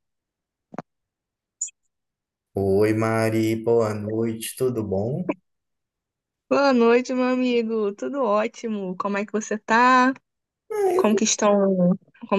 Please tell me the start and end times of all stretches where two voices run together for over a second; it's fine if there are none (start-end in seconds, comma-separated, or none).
none